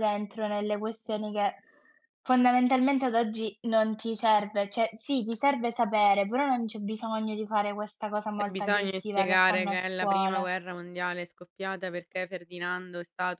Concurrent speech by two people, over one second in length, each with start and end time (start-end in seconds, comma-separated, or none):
8.4-10.5